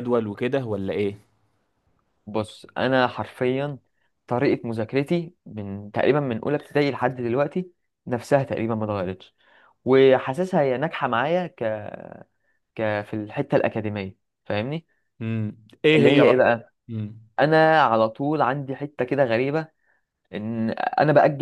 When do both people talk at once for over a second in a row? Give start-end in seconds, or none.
none